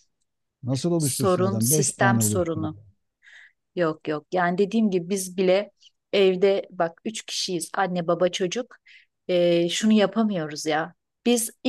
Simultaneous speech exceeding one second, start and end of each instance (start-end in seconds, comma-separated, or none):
1.0-2.7